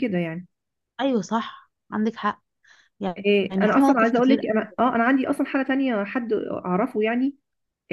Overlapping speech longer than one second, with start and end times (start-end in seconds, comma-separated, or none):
3.2-4.9